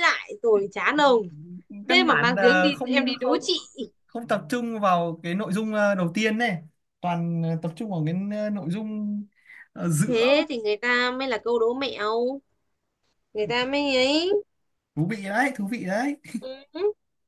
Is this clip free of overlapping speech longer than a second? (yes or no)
no